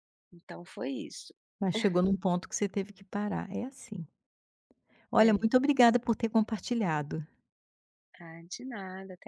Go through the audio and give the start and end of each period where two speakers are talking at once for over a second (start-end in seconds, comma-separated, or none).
none